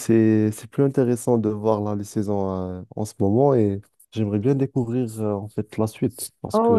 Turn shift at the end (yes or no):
yes